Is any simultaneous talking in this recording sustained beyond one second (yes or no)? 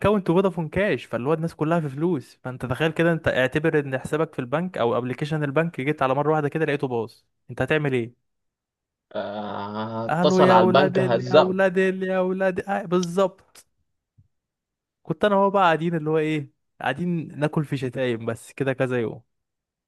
yes